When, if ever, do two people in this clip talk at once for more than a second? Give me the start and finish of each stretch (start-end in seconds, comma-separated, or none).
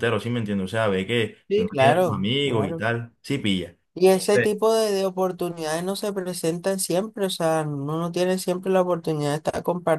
1.5-2.8